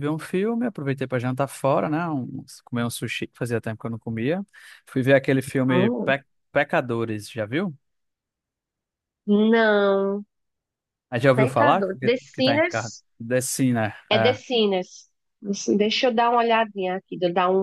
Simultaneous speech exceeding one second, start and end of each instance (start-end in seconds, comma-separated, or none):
11.4-12.9